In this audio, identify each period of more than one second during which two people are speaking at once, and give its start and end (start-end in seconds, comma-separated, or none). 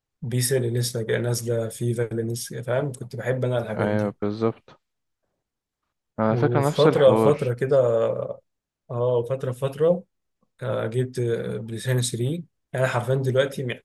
6.3-7.5